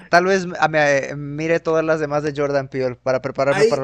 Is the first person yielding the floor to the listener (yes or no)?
yes